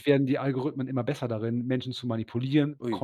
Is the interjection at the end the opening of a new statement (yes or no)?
no